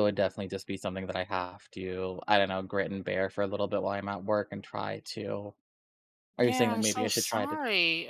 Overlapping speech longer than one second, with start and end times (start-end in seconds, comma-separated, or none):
6.4-7.6